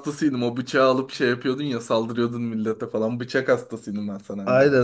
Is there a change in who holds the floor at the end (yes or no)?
yes